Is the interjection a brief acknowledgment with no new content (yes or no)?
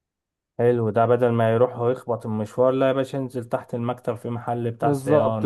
no